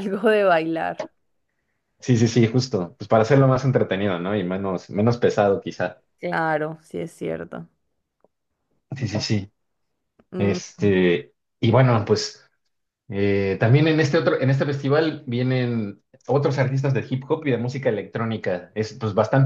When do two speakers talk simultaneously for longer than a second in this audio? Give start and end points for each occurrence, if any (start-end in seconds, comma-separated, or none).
none